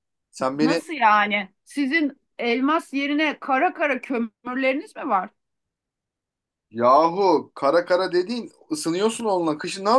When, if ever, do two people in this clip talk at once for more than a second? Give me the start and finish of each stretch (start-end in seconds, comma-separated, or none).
none